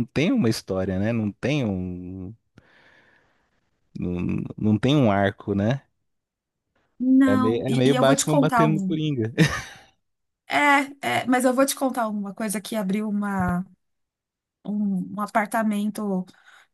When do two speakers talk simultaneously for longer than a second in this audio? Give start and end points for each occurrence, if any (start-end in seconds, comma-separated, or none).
7.3-9.0